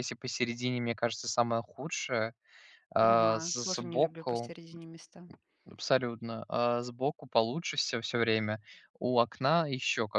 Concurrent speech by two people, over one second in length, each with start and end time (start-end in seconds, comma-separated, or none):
3.0-4.5